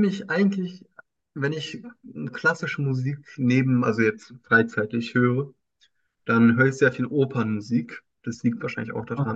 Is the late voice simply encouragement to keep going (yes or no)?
yes